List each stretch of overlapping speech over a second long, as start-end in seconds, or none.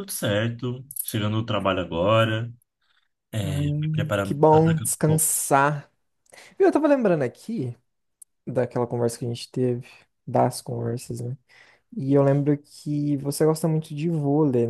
3.4-5.3